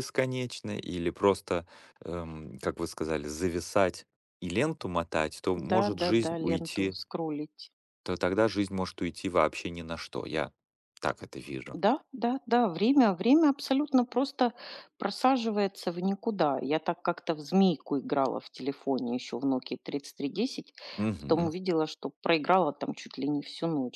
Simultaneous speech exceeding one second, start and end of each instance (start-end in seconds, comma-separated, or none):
5.7-7.0